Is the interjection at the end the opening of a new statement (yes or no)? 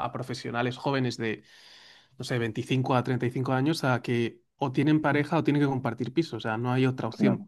no